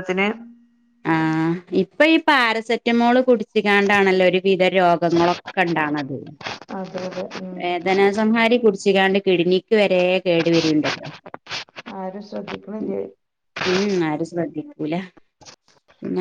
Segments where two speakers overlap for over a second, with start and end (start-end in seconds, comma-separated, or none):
none